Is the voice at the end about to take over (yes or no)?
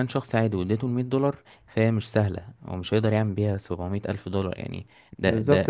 yes